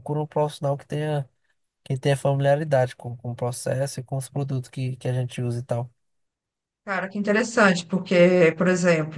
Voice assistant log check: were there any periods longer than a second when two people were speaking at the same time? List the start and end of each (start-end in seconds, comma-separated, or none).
none